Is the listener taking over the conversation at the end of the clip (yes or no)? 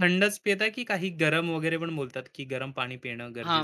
yes